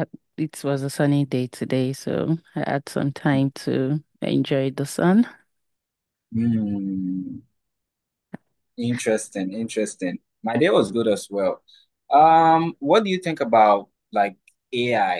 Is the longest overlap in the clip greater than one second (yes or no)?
no